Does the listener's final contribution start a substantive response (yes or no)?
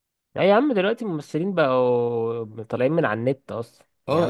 yes